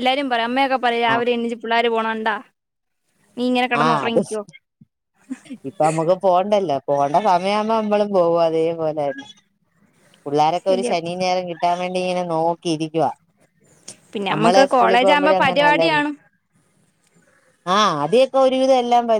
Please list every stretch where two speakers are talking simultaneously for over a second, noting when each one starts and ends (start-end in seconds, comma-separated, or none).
14.3-16.0